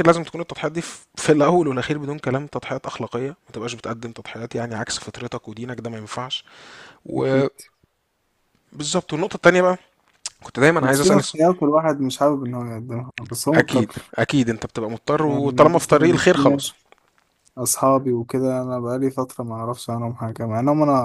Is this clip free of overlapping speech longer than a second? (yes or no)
no